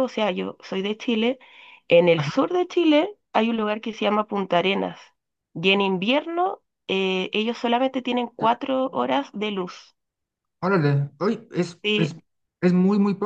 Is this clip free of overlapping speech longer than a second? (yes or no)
yes